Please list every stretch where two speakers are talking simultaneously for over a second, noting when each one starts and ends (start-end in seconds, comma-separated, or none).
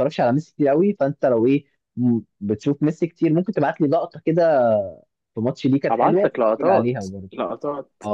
5.9-7.3